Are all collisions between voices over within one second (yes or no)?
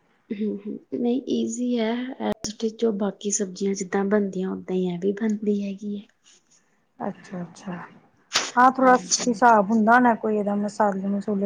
yes